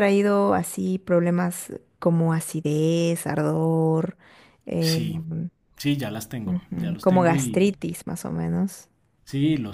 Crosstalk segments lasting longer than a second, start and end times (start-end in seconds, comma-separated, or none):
6.5-7.7